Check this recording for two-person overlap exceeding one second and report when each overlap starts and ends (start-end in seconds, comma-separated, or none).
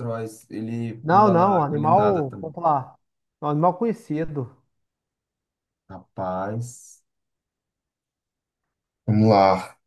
1.0-2.5